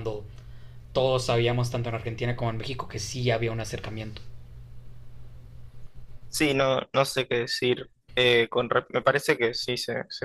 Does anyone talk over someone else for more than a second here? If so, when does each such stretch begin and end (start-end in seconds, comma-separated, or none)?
none